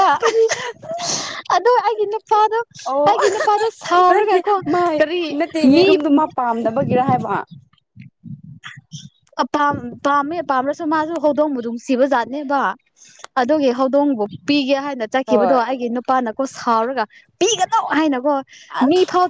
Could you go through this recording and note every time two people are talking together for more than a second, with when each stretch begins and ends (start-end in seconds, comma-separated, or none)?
none